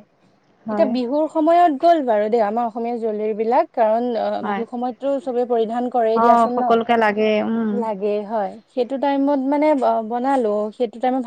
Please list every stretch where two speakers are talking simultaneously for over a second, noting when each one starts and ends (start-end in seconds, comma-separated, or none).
6.2-7.7